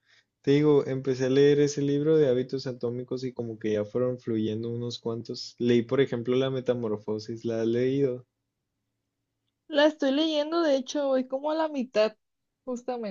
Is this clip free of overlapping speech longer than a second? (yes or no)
yes